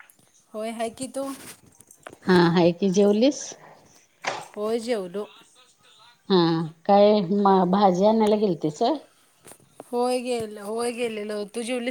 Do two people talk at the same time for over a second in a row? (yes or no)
no